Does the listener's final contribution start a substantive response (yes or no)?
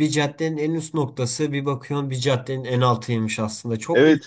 no